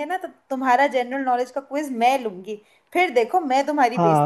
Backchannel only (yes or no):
no